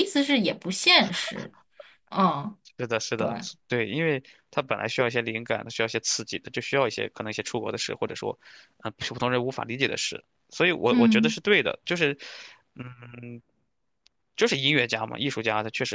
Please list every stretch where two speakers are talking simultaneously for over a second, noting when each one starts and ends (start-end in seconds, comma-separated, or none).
none